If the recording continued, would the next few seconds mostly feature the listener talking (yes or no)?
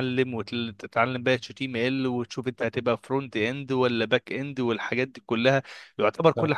no